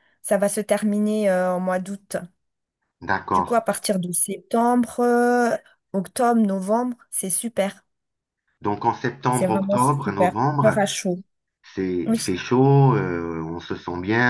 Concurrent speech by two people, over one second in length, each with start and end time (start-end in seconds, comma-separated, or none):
9.3-10.8